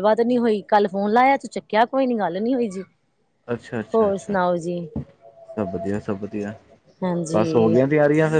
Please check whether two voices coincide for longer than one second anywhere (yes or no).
no